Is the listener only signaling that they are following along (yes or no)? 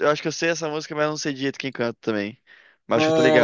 no